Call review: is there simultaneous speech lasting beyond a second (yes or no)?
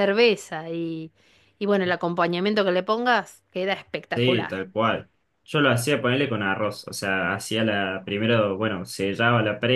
no